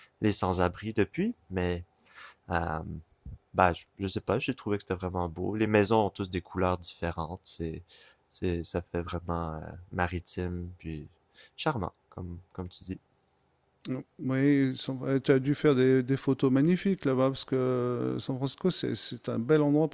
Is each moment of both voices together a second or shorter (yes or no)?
yes